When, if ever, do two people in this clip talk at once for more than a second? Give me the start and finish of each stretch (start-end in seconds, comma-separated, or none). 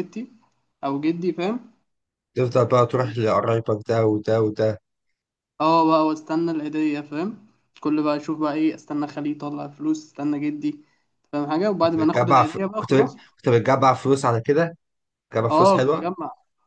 11.8-13.2